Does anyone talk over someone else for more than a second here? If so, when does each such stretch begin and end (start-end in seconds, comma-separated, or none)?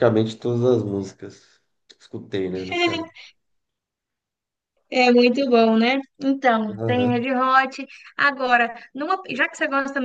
none